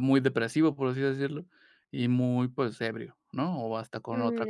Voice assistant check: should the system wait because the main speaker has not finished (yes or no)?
no